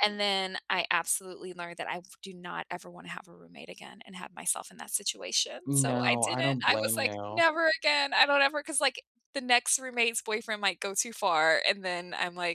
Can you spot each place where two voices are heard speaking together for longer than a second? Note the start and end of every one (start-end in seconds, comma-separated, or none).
5.7-7.4